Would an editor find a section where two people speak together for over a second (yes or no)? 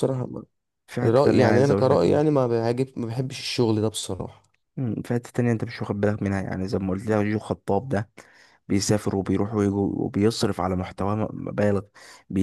yes